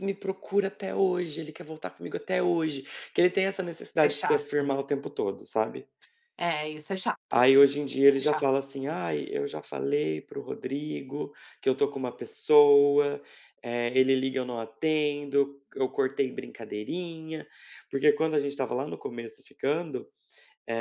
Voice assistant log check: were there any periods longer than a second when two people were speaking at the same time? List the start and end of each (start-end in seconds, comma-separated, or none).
none